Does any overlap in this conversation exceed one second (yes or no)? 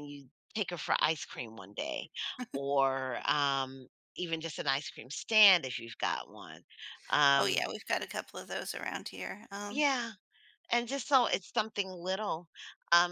no